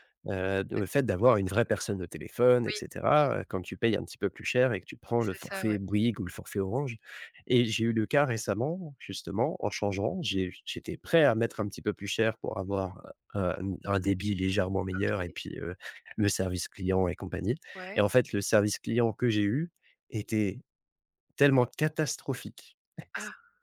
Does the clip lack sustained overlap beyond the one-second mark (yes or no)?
yes